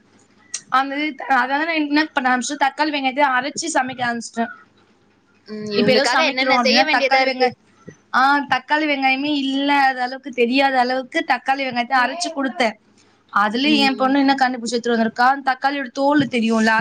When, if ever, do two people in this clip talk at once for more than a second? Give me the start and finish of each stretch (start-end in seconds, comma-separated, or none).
5.8-7.5